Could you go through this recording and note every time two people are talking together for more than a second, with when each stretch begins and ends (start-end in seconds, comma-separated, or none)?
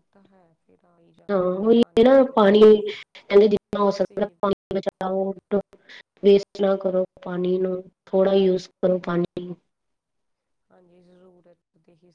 1.3-2.9